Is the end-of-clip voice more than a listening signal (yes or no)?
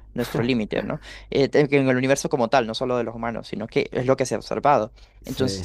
no